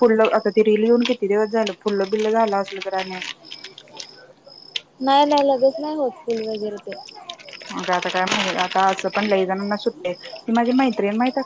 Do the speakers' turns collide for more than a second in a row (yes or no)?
no